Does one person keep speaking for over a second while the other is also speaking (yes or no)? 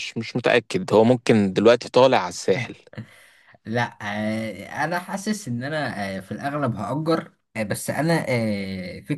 no